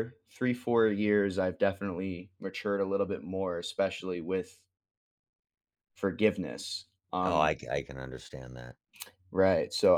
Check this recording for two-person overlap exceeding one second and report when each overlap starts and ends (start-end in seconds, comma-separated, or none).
none